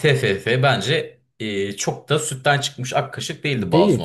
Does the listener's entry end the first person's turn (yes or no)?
yes